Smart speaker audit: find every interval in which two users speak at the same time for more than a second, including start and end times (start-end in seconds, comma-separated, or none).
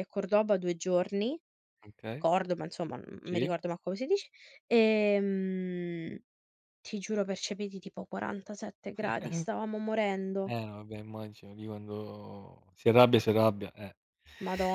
none